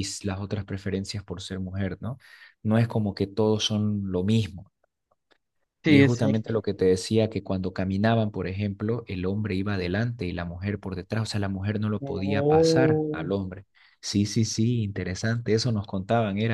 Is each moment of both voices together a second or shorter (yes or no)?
no